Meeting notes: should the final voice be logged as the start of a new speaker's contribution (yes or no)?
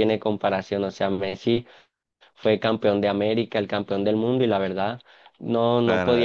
yes